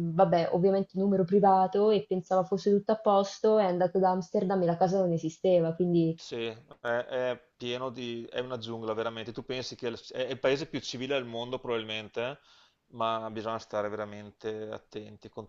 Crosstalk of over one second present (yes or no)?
no